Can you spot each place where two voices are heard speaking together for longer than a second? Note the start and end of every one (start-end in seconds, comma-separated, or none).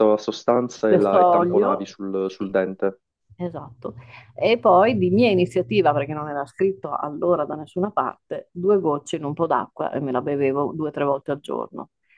0.8-2.5